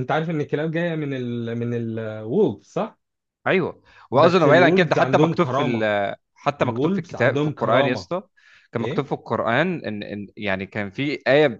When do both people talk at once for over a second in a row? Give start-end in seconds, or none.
4.1-5.9, 6.6-8.1